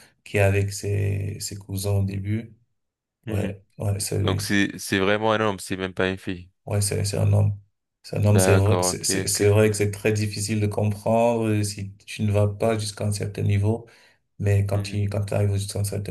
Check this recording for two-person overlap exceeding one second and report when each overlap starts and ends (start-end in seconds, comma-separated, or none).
8.3-9.6